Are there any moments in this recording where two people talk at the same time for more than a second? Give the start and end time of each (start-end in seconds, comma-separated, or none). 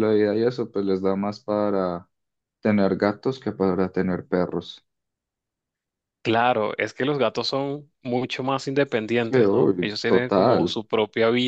9.2-10.8